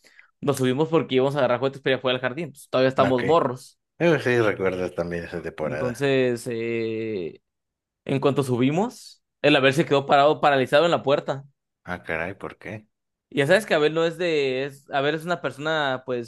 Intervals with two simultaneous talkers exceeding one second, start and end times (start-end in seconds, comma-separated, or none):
none